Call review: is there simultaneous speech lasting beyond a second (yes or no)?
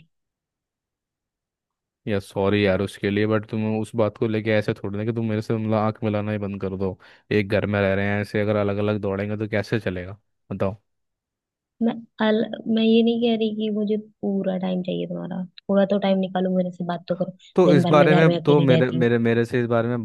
yes